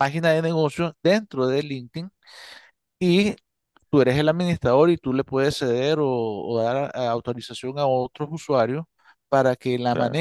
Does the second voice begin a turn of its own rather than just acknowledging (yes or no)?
no